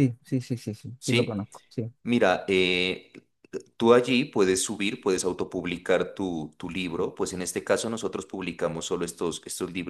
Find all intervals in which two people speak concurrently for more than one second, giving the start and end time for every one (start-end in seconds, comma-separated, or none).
none